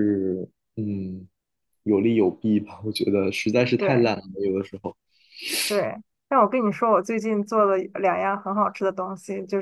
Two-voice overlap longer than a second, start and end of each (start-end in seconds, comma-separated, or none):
none